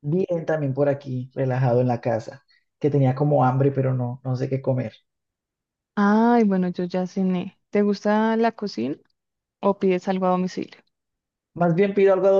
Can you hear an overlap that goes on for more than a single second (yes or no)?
no